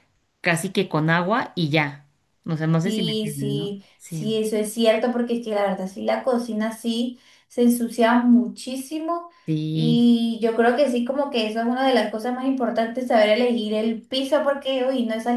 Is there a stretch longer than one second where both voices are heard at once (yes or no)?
yes